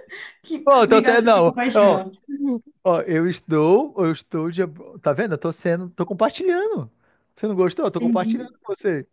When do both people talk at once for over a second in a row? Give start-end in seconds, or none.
0.6-2.0